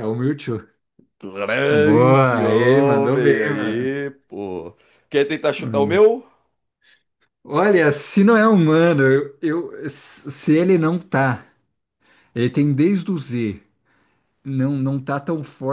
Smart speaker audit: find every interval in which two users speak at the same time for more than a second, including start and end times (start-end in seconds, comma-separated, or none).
1.7-4.0